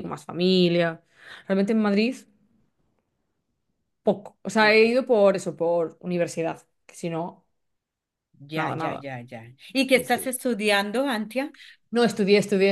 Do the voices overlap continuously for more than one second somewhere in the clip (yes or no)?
no